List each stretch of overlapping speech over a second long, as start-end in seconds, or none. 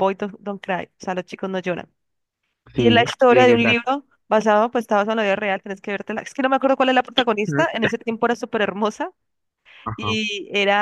2.7-4.0